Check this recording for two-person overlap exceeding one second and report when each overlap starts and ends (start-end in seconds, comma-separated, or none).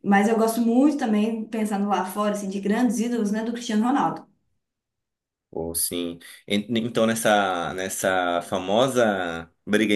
none